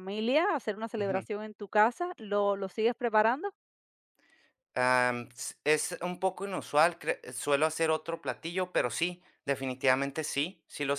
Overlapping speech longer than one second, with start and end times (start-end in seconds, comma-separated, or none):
none